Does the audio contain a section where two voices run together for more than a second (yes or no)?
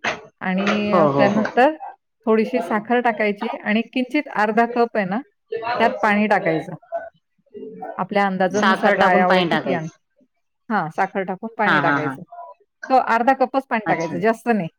yes